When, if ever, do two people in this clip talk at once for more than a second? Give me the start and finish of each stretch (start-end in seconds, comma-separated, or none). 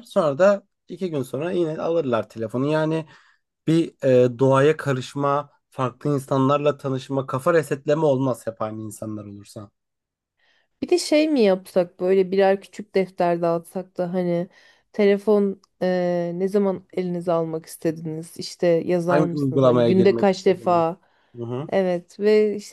19.1-20.8